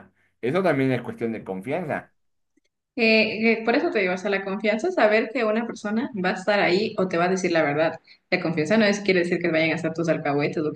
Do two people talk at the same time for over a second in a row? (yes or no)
no